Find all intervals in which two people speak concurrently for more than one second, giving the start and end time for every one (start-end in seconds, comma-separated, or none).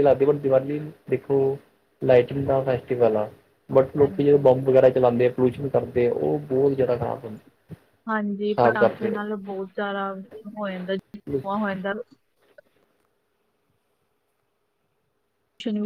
none